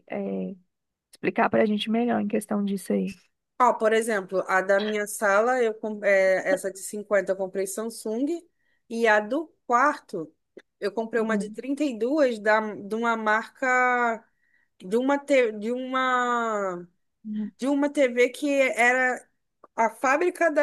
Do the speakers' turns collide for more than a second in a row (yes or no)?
no